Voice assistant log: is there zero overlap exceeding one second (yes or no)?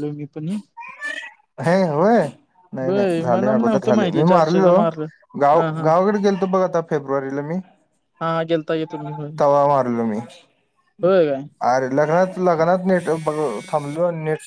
no